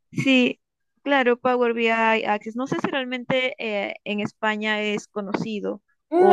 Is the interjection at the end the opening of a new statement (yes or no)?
yes